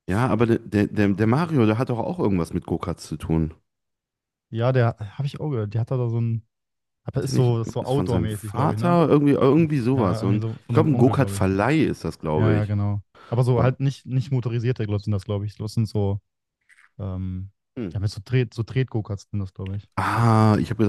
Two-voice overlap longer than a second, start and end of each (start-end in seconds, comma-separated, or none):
7.2-9.0, 9.9-11.4